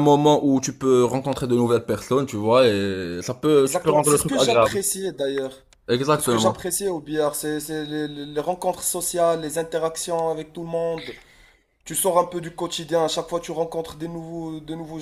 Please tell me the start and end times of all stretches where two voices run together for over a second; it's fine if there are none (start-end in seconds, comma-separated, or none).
3.5-4.8